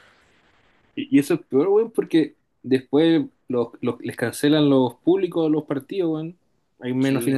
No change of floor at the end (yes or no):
yes